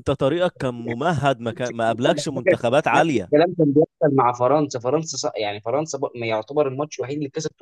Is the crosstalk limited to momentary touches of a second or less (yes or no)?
no